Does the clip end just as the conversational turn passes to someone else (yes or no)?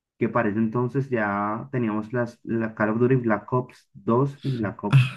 yes